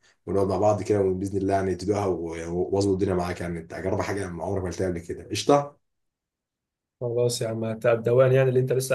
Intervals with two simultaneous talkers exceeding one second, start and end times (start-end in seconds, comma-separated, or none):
none